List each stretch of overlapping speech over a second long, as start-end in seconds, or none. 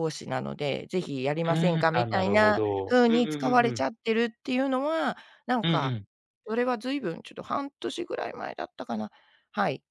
1.5-3.8